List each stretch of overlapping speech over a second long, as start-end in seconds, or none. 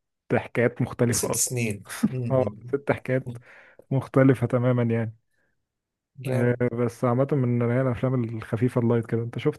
none